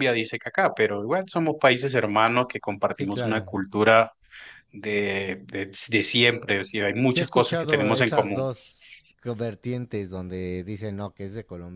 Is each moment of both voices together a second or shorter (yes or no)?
no